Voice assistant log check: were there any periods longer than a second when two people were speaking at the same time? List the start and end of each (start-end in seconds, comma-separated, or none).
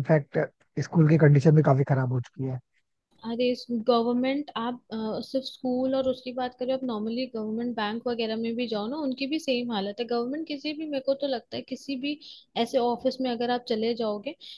none